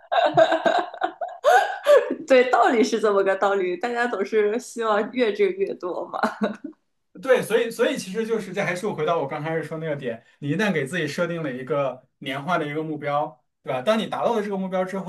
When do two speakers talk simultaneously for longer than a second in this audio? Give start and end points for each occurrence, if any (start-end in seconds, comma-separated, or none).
none